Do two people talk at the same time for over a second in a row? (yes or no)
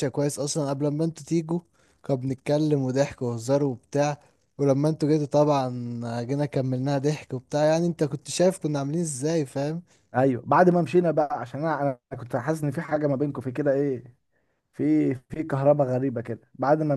no